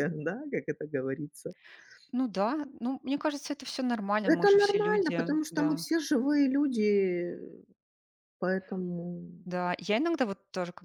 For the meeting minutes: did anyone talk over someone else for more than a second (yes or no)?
yes